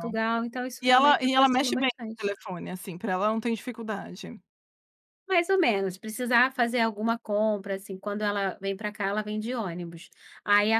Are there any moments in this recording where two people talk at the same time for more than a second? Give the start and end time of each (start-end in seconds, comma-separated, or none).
0.8-2.3